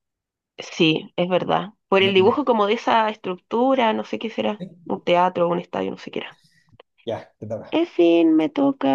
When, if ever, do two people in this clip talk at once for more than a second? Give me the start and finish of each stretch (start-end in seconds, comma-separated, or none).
none